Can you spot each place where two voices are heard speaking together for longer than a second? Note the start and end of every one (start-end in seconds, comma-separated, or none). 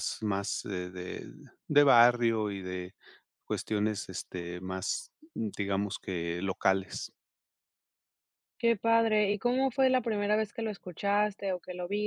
none